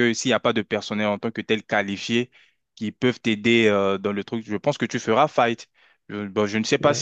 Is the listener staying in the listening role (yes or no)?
yes